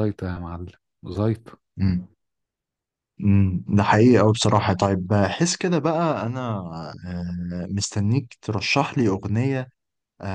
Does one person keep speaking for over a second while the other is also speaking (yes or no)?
no